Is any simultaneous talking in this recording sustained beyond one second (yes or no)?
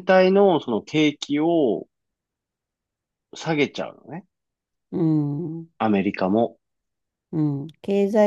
no